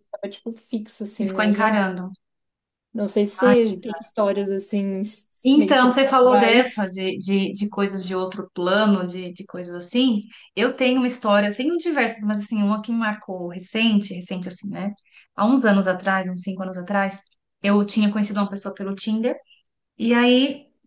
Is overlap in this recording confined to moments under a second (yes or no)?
no